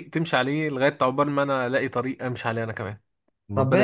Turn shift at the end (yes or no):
yes